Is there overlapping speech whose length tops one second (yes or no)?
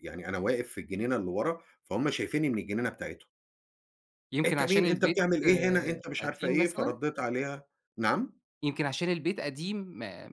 yes